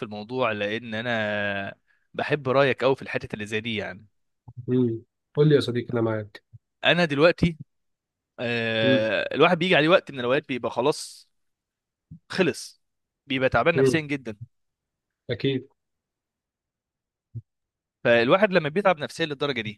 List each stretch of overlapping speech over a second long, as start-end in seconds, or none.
none